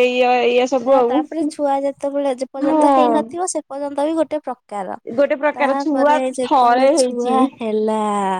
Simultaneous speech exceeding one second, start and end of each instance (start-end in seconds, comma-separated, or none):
5.6-7.4